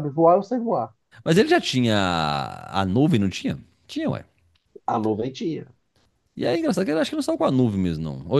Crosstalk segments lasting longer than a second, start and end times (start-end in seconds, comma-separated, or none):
none